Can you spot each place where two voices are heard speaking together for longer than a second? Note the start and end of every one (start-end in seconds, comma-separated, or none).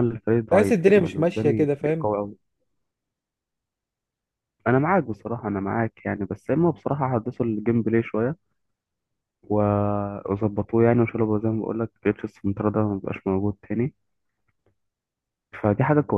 0.5-2.1